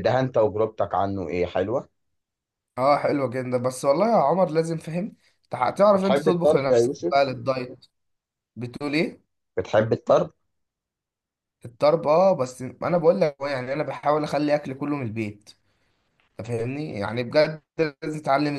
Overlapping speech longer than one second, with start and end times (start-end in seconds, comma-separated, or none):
5.9-7.3